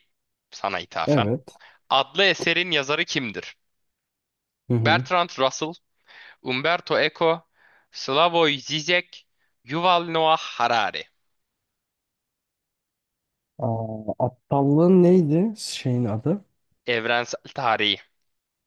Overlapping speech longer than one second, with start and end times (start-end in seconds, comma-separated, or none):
none